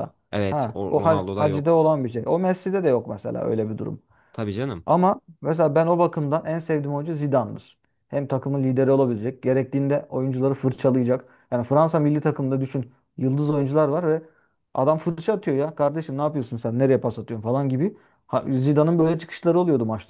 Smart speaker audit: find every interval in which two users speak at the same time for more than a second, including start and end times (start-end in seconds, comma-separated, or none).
0.5-1.9